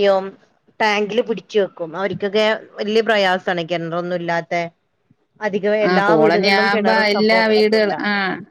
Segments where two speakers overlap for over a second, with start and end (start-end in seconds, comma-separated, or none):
5.9-7.9